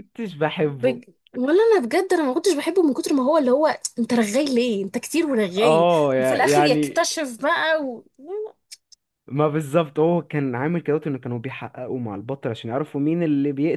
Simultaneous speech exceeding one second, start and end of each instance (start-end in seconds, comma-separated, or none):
5.6-7.0